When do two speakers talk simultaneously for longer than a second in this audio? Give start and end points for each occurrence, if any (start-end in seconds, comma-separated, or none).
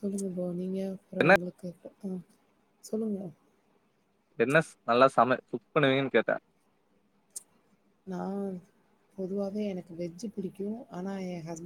none